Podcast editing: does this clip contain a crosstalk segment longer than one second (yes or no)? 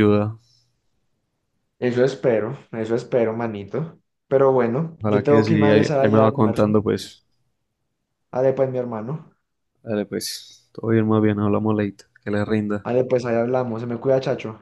yes